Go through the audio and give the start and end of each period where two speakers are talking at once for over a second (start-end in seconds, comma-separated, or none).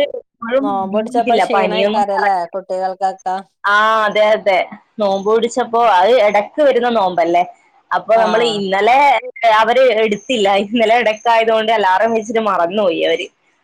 0.6-2.4